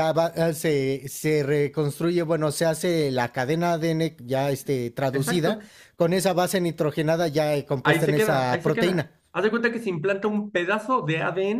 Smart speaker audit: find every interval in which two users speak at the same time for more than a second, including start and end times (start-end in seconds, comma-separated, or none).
7.8-9.1